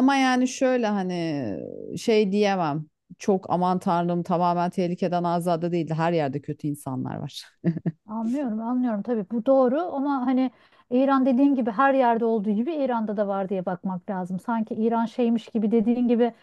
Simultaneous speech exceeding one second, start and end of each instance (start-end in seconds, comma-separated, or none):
none